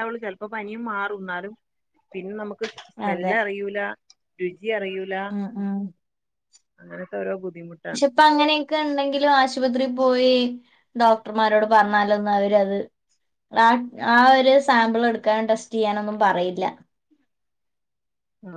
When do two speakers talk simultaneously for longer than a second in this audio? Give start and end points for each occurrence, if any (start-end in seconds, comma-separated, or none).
none